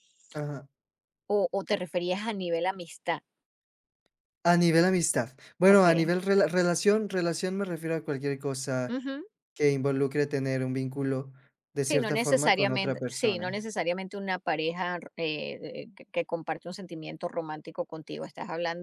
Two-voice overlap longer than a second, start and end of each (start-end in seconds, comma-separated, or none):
11.8-13.7